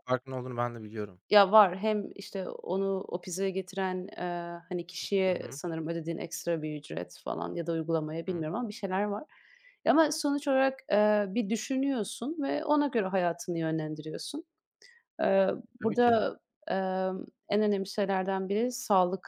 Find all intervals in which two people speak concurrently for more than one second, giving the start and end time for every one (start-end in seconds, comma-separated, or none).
none